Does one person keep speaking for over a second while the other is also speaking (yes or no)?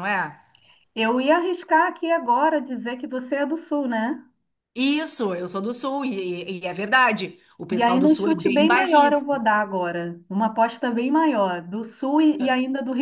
yes